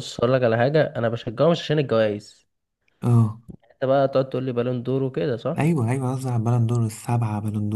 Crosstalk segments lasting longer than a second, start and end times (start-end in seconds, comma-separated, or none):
none